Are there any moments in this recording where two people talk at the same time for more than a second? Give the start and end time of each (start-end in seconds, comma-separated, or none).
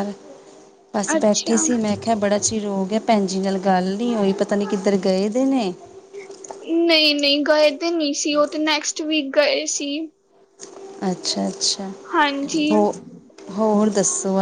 none